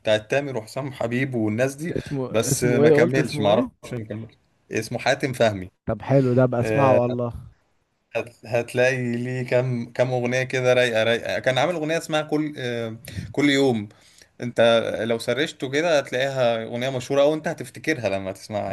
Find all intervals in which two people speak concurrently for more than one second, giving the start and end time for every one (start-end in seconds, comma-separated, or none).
2.3-3.8